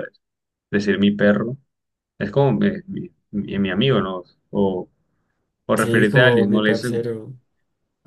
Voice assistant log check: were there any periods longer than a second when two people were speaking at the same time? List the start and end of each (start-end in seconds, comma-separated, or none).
5.7-7.1